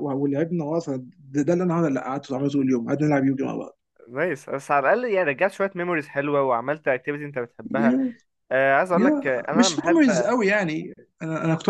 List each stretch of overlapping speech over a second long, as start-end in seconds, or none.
8.9-10.3